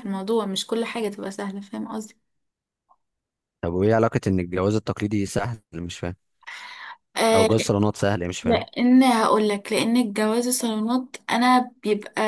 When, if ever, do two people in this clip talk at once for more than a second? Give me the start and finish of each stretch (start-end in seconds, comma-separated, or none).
none